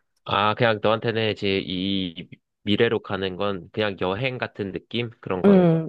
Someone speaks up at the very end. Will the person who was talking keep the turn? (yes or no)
no